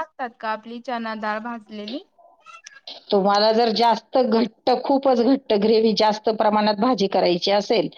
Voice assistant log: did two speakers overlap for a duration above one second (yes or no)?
no